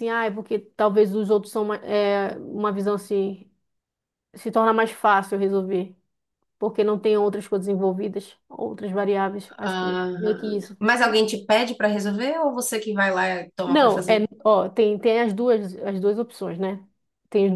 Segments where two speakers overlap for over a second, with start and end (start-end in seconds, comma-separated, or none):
9.6-11.1